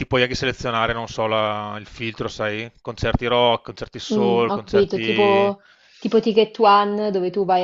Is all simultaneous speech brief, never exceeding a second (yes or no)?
no